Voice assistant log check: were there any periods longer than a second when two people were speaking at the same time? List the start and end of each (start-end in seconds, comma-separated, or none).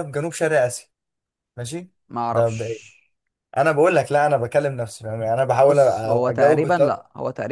5.5-7.0